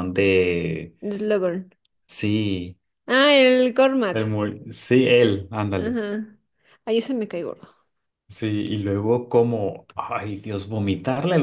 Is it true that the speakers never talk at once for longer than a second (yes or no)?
yes